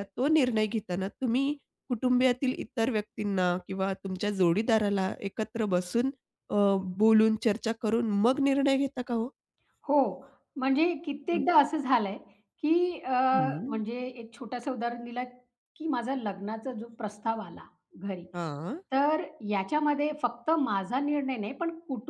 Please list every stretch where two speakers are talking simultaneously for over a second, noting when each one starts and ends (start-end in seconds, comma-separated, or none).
none